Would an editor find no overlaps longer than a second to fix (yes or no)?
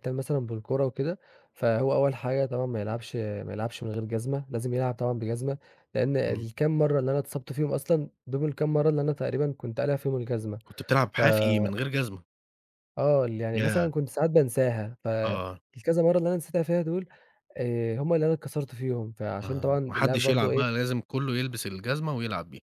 no